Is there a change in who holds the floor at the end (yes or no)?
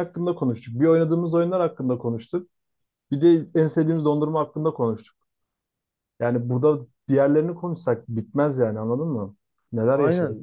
yes